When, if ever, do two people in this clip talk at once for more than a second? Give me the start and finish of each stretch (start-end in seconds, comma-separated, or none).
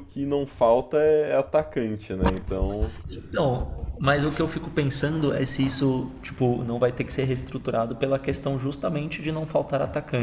none